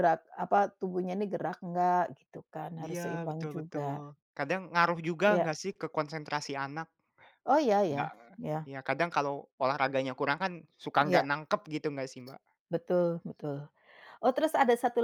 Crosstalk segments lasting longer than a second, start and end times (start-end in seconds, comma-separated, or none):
2.8-4.0